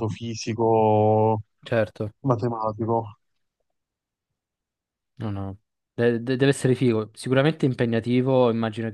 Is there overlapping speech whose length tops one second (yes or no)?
no